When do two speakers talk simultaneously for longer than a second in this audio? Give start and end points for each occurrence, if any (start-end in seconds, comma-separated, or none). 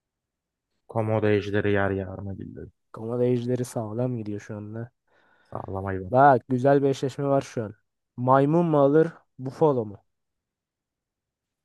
none